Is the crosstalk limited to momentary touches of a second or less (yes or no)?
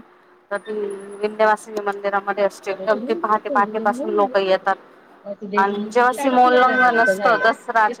no